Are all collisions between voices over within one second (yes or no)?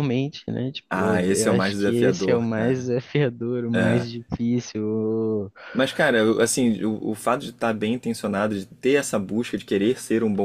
no